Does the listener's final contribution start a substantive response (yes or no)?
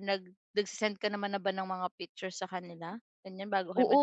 yes